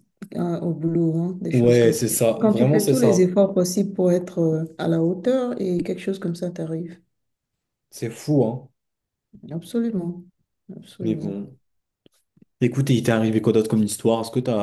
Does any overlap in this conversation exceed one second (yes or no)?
yes